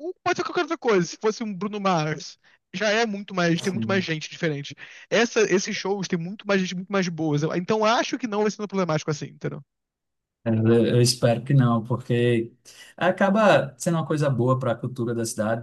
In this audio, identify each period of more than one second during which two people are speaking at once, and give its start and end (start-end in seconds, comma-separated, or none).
none